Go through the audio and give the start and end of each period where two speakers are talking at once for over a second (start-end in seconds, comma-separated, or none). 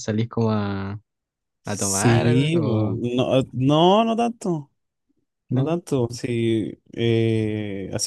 1.6-3.0